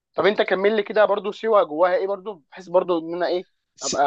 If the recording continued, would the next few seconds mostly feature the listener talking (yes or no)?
yes